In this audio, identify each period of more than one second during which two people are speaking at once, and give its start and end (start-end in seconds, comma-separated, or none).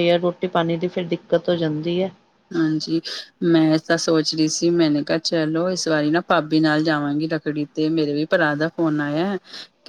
none